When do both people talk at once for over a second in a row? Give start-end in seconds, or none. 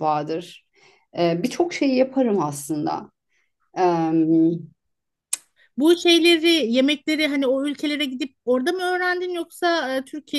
none